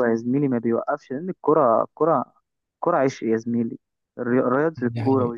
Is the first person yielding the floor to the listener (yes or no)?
no